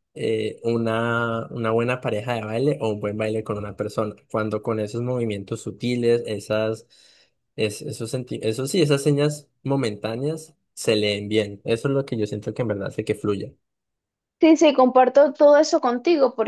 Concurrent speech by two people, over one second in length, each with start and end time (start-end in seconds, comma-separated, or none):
none